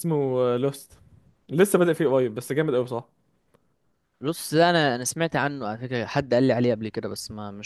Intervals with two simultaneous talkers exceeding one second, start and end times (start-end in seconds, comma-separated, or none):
none